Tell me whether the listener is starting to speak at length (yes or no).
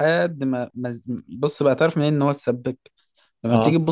no